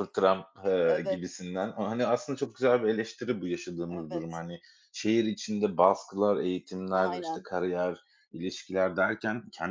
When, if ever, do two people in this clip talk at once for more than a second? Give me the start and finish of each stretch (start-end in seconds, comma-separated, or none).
none